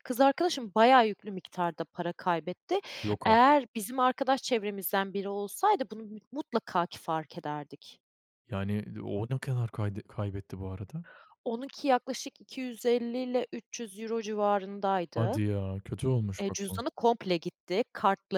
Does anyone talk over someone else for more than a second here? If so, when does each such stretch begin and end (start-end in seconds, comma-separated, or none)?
none